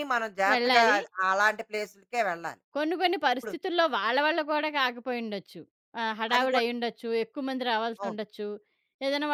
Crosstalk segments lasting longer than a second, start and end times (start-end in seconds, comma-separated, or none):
none